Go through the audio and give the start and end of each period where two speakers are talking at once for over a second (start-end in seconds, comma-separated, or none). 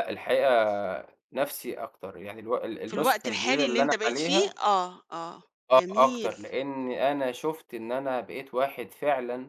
2.9-4.5